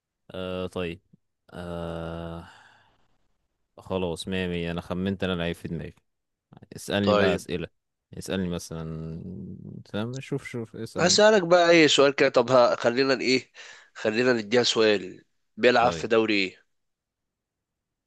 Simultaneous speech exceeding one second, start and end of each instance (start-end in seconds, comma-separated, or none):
none